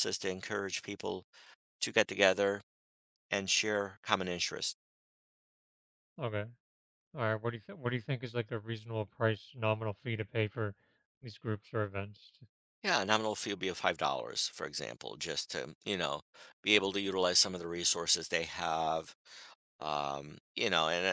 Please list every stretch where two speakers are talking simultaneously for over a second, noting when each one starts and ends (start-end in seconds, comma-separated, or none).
none